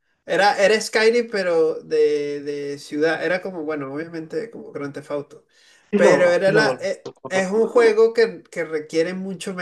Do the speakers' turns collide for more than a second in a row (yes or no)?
yes